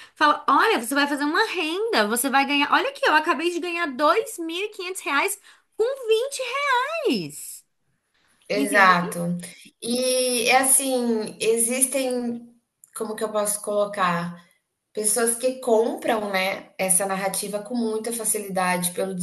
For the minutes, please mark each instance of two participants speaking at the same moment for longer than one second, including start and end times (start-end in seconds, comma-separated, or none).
none